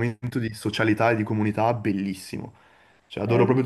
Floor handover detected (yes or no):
yes